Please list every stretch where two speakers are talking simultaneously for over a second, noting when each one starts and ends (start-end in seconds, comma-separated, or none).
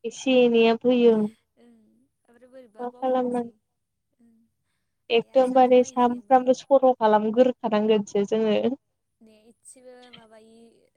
5.2-6.5